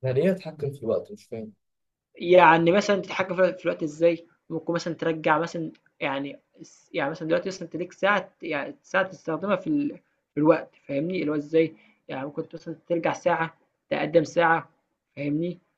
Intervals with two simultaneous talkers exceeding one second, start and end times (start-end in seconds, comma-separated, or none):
none